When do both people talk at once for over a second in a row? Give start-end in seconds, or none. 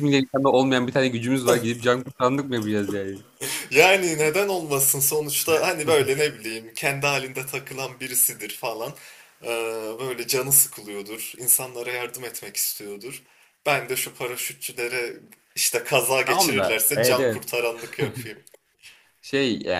16.2-17.5